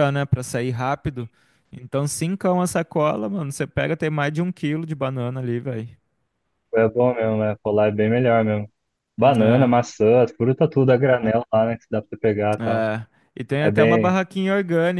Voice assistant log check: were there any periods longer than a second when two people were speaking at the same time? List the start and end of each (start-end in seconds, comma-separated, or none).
none